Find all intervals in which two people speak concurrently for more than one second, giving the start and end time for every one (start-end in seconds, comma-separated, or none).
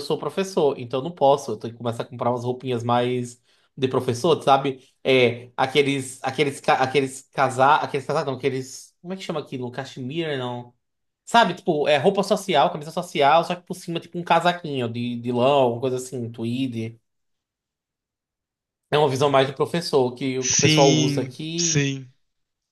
20.4-21.9